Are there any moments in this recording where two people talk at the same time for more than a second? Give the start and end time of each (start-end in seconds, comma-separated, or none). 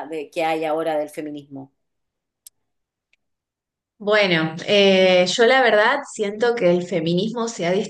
none